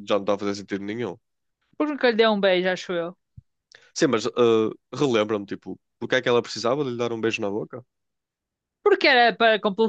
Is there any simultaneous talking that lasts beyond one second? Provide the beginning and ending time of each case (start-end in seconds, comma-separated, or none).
none